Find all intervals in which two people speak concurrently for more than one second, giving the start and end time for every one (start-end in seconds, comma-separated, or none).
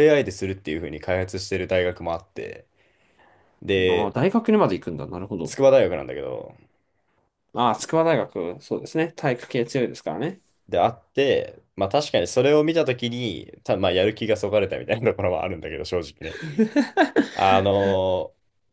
none